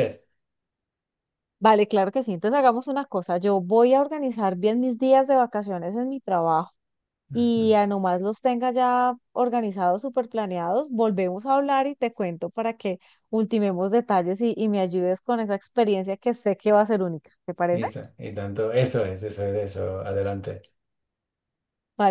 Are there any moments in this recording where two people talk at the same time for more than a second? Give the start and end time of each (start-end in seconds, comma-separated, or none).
none